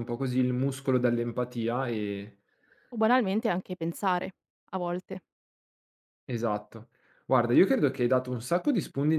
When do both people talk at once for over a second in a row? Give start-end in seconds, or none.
none